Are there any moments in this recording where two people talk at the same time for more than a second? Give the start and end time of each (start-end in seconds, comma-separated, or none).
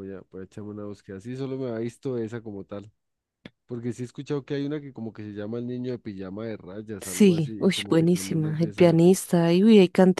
7.0-9.3